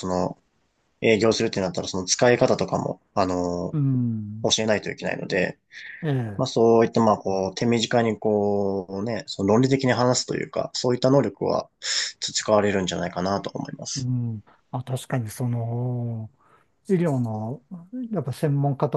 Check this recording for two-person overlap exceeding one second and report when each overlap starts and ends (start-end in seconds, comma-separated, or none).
none